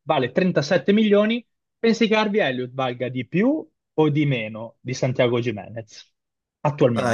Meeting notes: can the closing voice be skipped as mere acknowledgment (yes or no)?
no